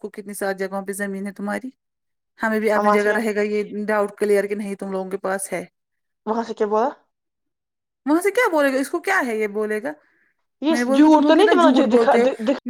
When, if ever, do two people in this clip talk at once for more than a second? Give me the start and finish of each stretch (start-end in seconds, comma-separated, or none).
10.7-12.1